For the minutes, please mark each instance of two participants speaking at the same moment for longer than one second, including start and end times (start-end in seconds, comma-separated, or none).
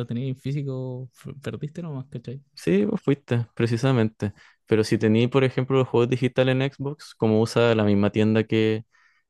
none